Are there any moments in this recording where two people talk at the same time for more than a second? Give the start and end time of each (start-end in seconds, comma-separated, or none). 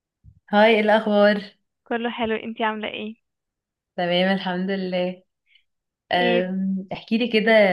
none